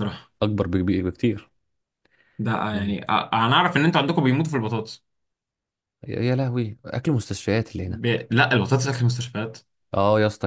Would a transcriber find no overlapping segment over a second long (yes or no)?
yes